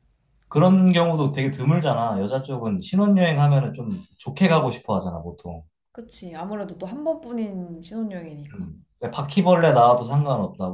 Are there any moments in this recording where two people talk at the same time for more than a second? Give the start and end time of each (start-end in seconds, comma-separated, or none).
none